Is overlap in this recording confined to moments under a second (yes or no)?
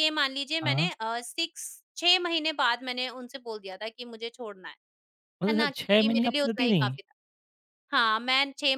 no